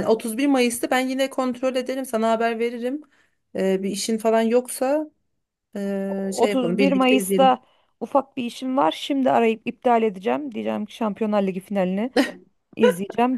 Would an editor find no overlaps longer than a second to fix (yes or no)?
no